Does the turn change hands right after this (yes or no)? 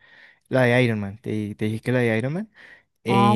no